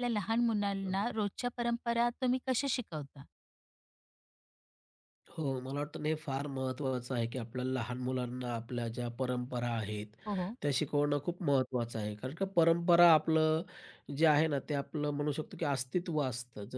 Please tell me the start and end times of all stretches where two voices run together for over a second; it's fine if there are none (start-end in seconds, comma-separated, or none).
none